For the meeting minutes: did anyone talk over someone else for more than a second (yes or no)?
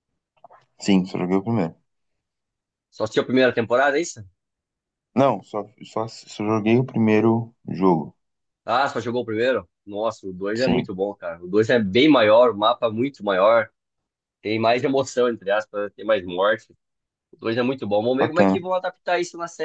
no